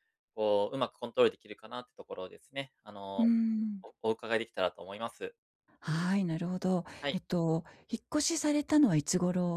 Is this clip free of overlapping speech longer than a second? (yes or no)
yes